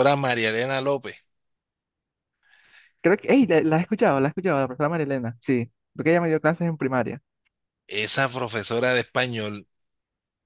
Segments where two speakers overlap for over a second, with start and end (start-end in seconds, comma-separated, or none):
none